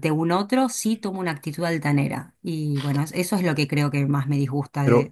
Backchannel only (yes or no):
no